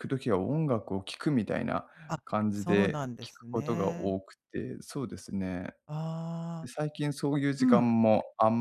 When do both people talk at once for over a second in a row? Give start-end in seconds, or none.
2.2-4.2